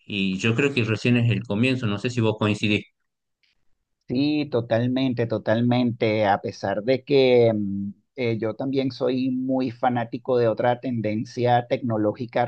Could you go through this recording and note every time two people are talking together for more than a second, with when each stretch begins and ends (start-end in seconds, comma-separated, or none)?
none